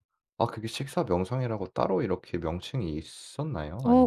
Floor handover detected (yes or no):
yes